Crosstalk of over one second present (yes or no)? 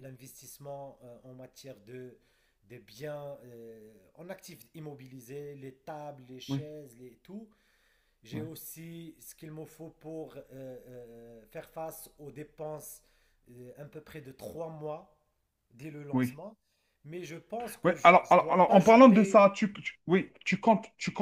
yes